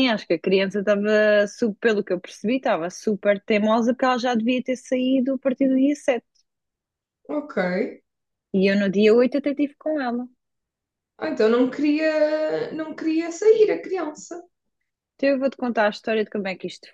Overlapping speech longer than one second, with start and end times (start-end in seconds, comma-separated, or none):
none